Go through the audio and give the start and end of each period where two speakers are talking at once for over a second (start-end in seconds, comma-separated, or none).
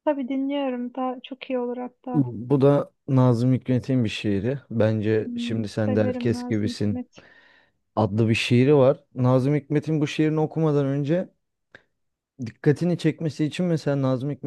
5.2-7.0